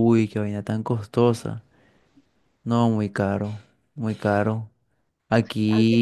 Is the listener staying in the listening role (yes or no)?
yes